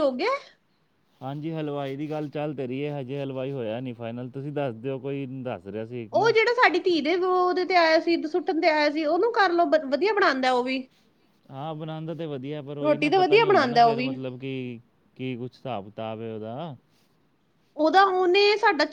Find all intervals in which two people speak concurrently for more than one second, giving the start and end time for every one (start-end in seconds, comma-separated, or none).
12.8-14.1